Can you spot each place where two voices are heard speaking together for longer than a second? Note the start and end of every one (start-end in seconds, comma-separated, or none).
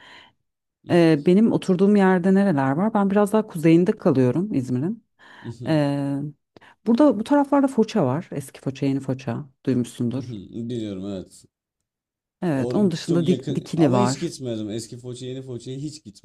12.5-14.3